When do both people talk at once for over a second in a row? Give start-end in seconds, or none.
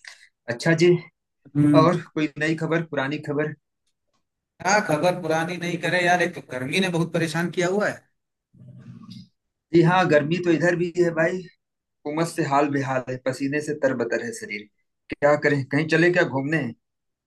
none